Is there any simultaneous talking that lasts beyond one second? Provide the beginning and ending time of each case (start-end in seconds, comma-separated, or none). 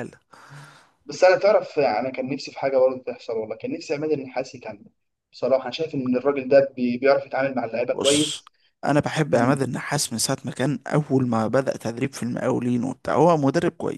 none